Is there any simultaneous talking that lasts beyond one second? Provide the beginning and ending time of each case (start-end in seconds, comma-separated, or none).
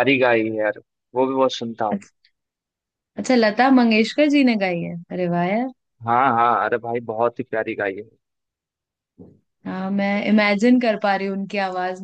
none